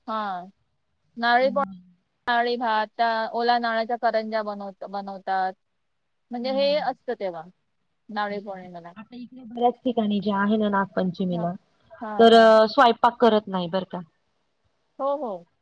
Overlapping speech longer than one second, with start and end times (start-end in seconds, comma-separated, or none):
none